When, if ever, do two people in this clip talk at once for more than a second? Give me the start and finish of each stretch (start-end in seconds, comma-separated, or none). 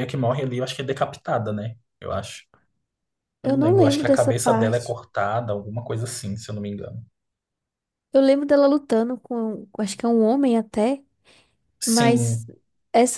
3.4-5.0